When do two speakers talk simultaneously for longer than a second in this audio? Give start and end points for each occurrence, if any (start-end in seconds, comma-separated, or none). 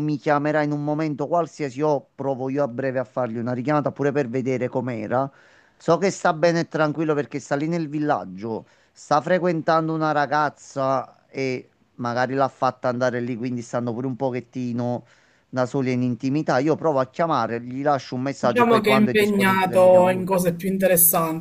18.4-20.2